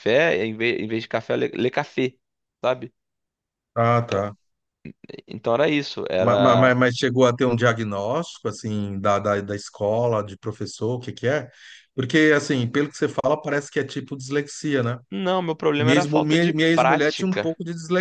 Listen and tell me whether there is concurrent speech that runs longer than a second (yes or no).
yes